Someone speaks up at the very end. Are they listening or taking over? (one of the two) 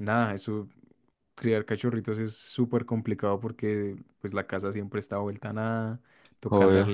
listening